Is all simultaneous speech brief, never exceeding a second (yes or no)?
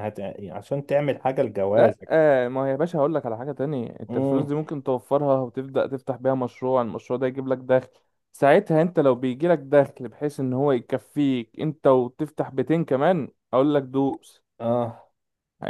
yes